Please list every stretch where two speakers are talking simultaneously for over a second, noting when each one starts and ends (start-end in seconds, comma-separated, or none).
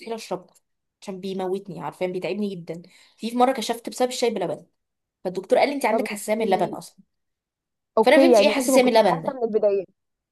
8.0-9.4